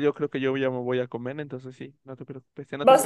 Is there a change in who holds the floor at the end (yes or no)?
yes